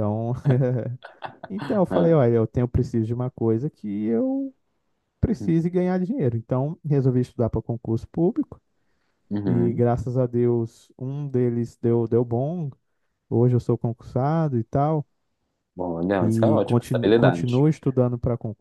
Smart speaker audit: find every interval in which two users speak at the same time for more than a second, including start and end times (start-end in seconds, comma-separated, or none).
16.2-17.6